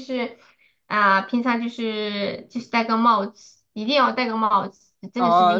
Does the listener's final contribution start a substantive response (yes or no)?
yes